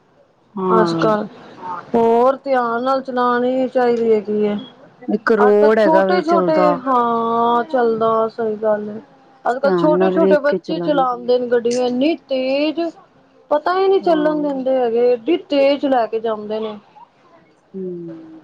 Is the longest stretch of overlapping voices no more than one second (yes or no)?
no